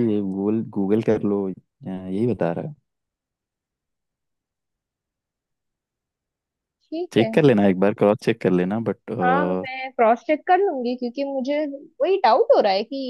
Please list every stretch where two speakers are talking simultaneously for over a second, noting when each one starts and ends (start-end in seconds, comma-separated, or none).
none